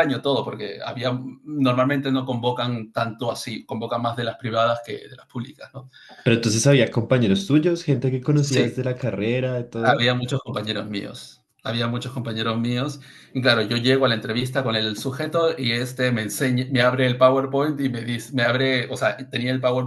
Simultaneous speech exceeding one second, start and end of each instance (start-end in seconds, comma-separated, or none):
none